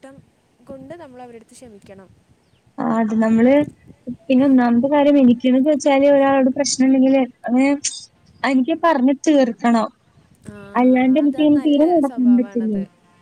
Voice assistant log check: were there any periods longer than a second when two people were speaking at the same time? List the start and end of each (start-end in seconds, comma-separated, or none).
10.8-12.7